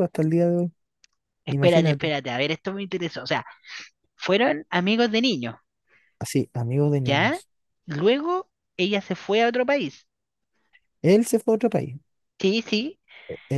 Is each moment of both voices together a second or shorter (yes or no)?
yes